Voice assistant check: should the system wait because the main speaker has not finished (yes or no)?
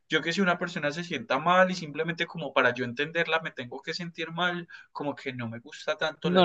no